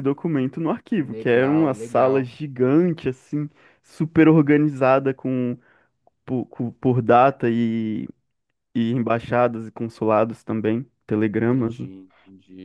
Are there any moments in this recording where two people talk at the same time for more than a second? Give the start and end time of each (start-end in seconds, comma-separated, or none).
0.9-2.3